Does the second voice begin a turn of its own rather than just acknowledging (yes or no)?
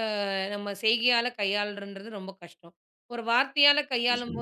no